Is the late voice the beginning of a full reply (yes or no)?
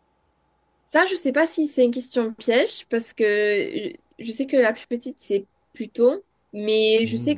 no